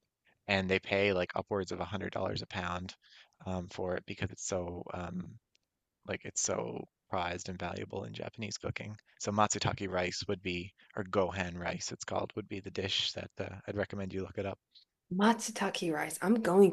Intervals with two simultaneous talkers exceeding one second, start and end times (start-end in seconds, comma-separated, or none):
none